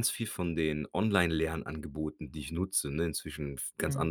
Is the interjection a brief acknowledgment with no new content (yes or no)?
yes